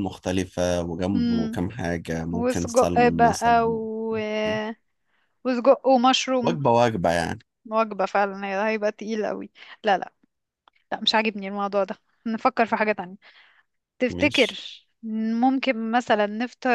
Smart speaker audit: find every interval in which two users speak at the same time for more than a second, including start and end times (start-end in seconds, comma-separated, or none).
2.3-3.8